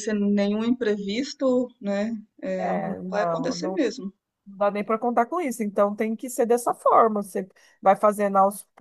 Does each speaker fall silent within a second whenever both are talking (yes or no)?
no